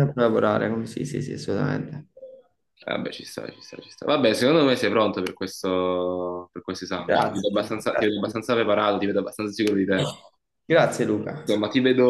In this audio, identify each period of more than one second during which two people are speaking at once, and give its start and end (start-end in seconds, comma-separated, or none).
7.0-8.3